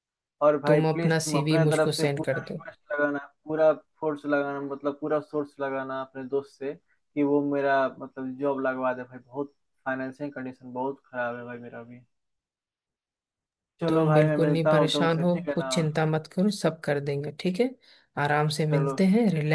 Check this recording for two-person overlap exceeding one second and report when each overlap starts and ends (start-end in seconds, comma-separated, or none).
0.7-2.6, 13.9-15.7